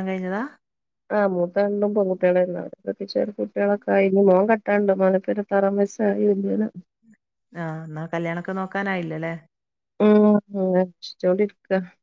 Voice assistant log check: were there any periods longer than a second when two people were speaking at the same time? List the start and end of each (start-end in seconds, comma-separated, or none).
none